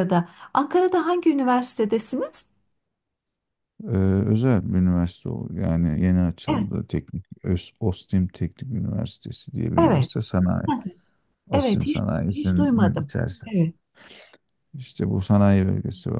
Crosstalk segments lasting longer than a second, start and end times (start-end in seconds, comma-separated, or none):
11.5-13.5